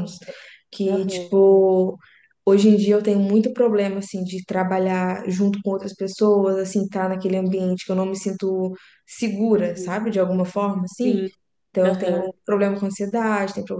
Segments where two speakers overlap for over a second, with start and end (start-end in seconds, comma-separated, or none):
none